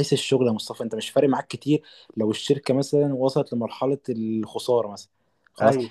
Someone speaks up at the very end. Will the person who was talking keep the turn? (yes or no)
yes